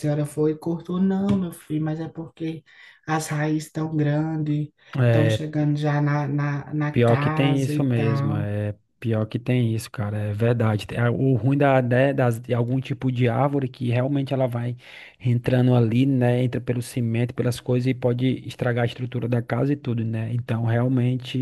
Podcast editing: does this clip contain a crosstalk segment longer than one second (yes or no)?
yes